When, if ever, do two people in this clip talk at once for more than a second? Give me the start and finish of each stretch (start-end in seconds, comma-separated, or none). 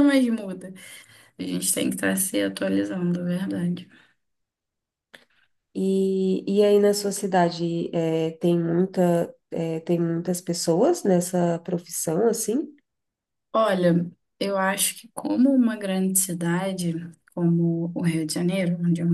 none